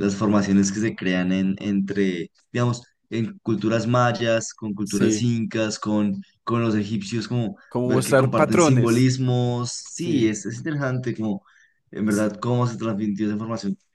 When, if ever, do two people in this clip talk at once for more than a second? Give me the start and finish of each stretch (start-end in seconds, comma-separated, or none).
7.7-9.1